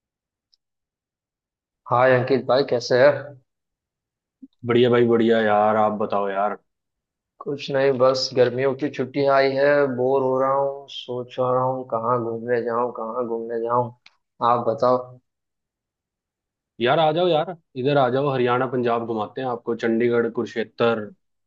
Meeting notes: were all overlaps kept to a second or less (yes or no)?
yes